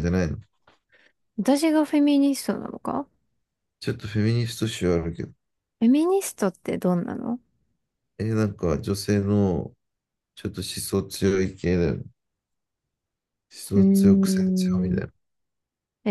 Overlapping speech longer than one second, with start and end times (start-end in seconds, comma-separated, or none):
13.7-15.0